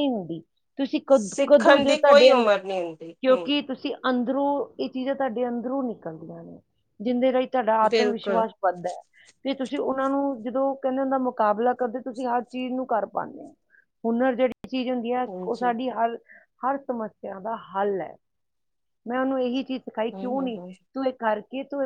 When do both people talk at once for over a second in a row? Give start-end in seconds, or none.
1.1-2.5